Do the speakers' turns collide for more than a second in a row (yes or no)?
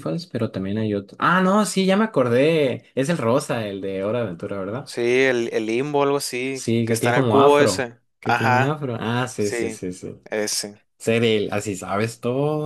yes